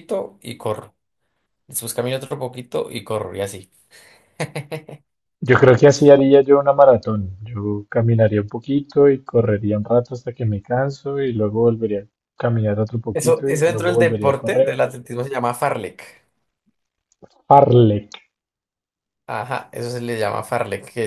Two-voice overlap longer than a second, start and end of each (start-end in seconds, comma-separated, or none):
13.1-14.7